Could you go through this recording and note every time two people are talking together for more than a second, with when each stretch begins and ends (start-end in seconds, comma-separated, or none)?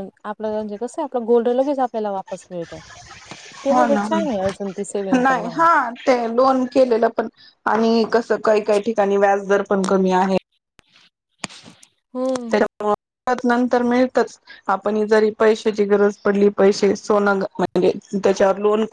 none